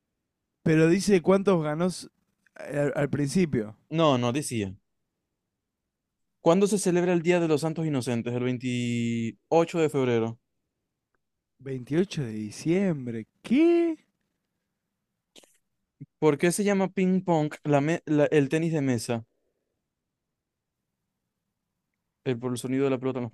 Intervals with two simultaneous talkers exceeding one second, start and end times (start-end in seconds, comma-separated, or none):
none